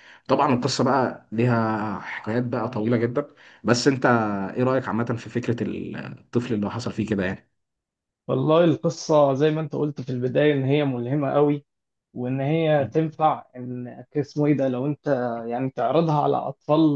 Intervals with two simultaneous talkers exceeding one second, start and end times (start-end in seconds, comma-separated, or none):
none